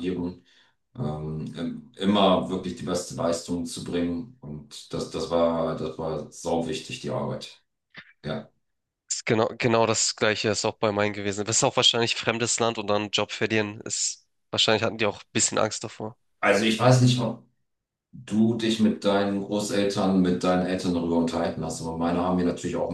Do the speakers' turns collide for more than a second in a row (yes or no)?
no